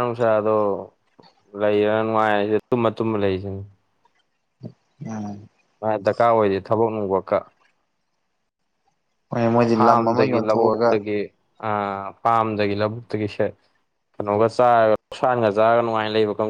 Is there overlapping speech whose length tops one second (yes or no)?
yes